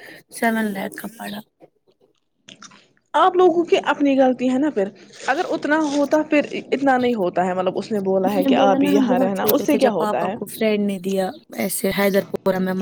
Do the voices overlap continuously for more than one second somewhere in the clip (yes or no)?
yes